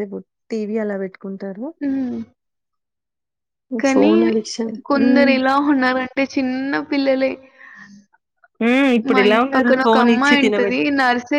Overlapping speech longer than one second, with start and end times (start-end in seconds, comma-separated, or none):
9.1-10.8